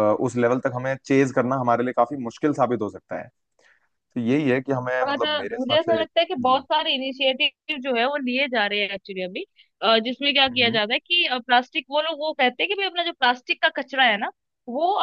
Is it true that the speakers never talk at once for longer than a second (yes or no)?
no